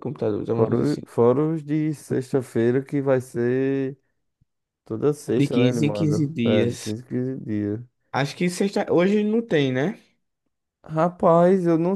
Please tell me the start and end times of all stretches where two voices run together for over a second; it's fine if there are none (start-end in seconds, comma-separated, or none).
5.4-6.9